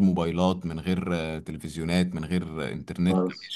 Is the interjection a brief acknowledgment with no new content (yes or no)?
no